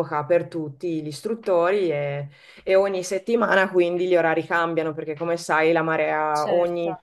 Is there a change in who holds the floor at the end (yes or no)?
no